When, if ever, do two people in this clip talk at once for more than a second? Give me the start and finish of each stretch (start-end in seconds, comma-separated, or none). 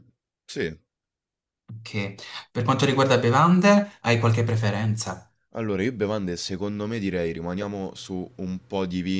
none